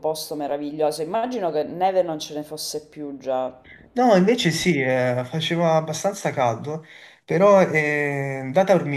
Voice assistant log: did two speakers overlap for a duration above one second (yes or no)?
no